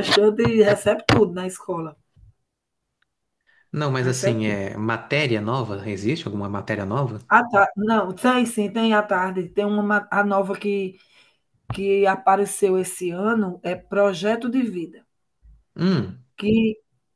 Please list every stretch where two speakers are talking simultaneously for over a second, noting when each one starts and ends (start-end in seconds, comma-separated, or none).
none